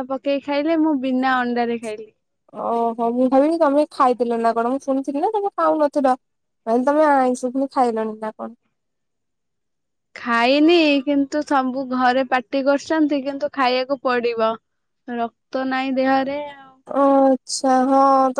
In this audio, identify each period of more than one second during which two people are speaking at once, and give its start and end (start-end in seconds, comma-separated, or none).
none